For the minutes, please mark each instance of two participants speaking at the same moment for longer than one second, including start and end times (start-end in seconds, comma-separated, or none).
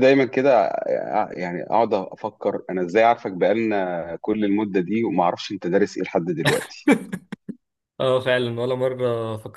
none